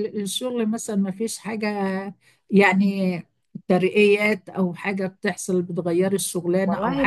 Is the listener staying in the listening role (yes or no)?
yes